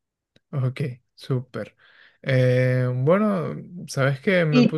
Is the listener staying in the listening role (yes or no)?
yes